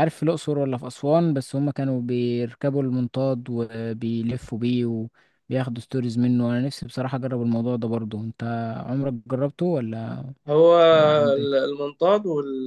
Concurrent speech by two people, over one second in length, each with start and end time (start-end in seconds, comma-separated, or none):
none